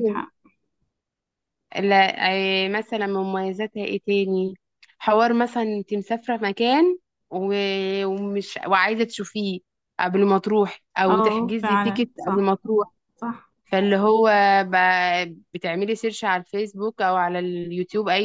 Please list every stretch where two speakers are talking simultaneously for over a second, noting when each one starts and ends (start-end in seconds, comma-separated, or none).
11.1-12.5